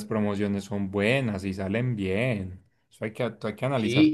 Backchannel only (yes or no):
no